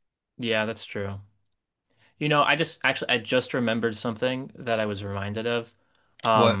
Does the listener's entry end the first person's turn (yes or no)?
no